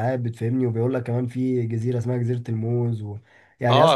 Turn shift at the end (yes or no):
yes